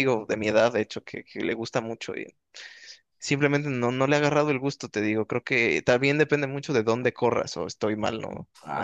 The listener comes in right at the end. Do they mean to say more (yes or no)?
yes